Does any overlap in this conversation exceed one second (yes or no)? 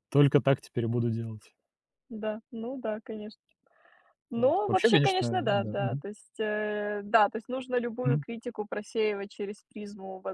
yes